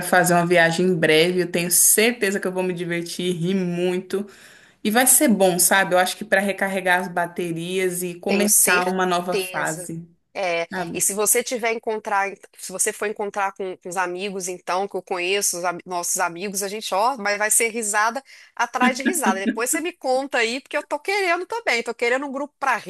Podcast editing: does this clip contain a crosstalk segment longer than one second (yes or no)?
yes